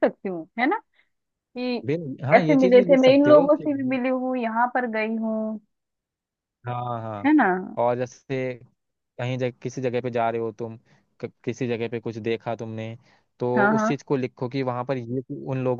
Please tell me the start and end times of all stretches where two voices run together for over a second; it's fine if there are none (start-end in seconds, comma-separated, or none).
2.4-3.7